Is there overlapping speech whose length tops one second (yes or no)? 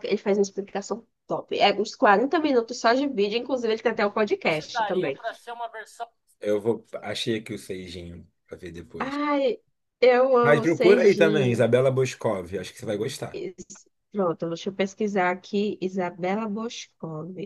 yes